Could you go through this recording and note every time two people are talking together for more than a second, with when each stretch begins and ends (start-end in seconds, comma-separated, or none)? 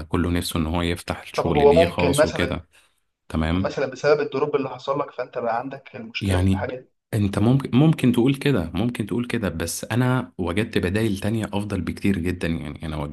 1.4-2.6